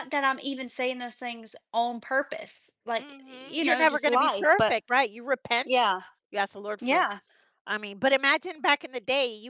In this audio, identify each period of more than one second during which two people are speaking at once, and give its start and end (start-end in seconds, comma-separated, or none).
3.0-4.8